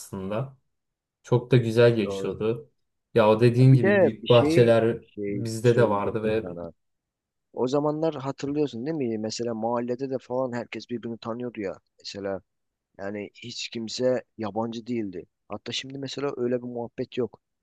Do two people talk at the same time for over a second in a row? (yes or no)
yes